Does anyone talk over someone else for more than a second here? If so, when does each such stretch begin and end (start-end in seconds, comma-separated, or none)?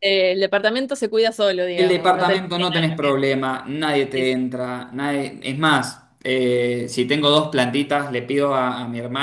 1.8-3.1